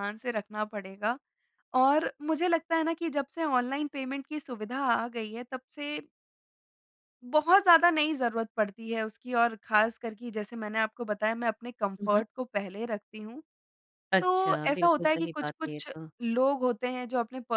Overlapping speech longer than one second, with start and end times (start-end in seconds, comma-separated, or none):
14.2-16.1